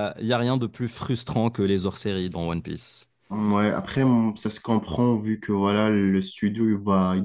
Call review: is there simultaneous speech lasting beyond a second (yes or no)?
no